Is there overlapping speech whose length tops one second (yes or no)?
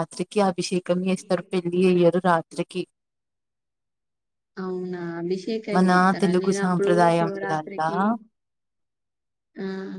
yes